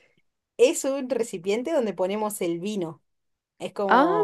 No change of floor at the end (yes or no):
yes